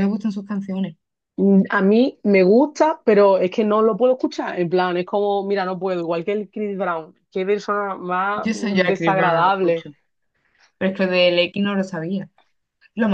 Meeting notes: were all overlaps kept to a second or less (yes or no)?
no